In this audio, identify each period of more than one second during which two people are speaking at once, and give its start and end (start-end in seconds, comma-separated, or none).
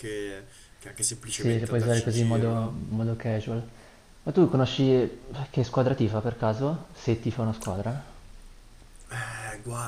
1.2-2.8